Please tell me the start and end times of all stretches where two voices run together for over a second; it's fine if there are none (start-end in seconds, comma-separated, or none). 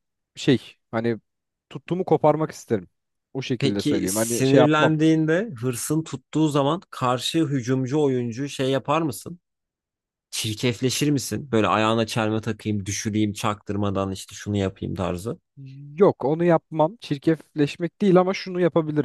3.6-4.9